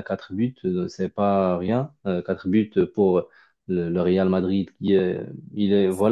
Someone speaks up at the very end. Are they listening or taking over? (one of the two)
listening